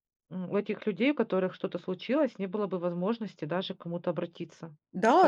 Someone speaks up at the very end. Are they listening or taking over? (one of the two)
taking over